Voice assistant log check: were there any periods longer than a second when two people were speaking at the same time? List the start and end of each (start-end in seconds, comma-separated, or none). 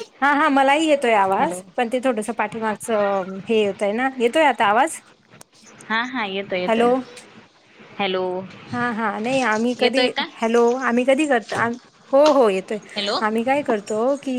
none